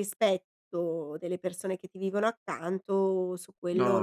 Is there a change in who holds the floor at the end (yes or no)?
yes